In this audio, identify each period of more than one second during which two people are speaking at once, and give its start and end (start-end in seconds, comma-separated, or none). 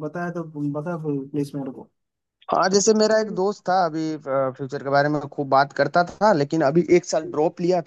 none